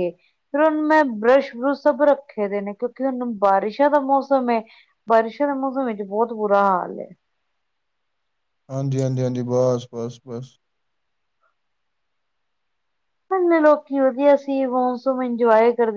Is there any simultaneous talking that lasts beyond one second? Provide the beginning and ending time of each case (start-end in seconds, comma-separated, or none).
none